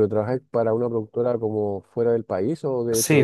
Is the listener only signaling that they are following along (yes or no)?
no